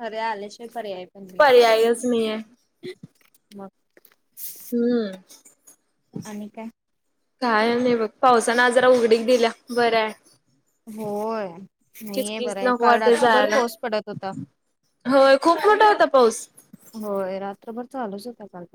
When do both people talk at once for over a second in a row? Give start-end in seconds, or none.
12.1-13.6